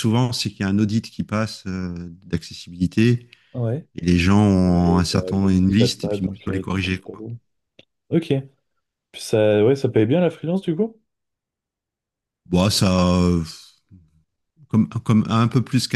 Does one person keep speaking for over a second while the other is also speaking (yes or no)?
yes